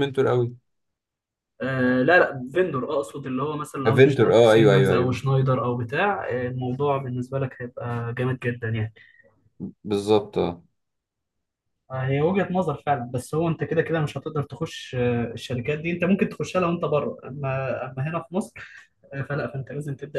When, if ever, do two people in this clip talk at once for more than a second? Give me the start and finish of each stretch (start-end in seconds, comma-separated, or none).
3.9-5.2